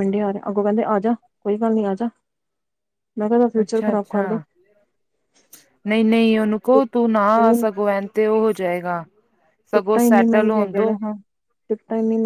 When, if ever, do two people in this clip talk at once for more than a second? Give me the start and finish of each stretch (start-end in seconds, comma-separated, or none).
9.7-10.9